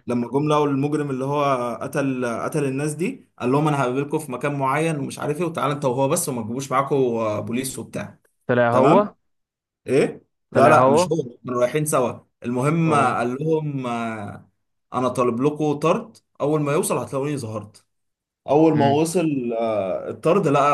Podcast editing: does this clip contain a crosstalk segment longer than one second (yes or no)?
no